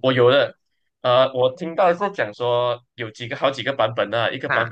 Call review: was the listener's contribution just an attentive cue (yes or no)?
yes